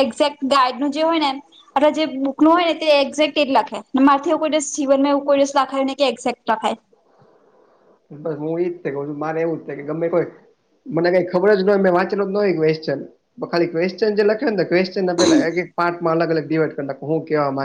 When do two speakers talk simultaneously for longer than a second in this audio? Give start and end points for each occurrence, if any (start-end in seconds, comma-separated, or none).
none